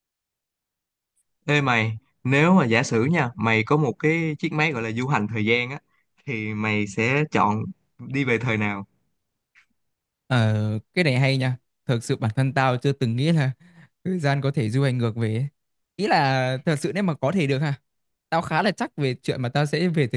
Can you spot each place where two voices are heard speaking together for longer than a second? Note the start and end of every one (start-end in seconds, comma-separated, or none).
none